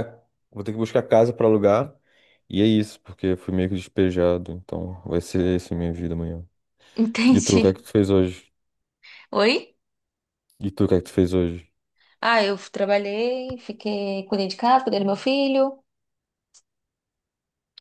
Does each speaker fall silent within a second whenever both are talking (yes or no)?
yes